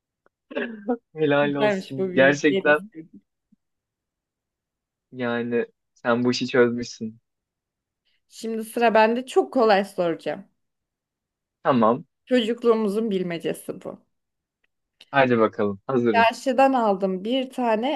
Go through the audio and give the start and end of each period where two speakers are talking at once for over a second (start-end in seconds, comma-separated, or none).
1.4-2.9